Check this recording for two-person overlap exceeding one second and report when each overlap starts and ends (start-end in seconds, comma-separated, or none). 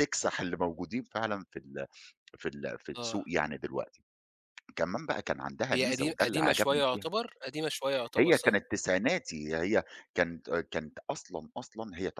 5.7-7.1